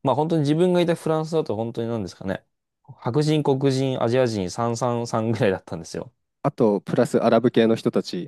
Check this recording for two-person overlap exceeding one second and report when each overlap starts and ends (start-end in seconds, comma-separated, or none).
none